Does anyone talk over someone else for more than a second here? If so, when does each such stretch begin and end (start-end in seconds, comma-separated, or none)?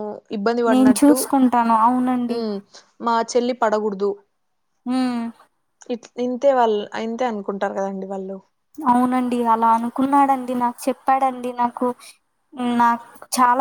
none